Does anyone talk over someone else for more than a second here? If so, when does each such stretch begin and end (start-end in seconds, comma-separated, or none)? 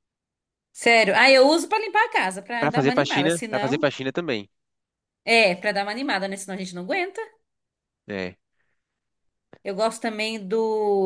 2.6-3.9